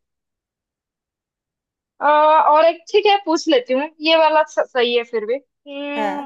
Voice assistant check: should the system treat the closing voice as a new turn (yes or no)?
no